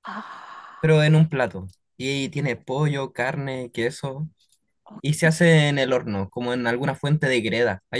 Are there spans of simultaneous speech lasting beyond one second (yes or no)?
no